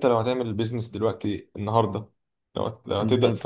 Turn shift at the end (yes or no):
no